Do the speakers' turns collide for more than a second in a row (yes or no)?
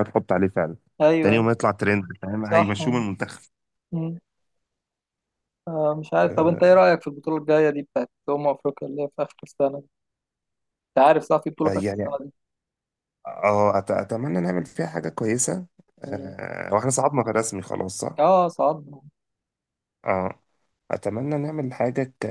no